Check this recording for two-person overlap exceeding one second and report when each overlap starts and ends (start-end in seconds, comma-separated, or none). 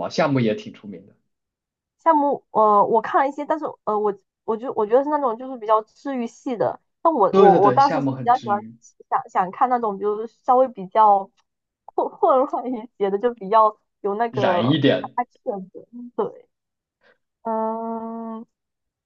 7.3-8.6